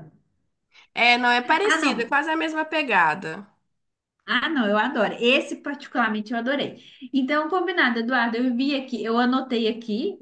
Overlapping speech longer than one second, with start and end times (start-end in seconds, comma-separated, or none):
none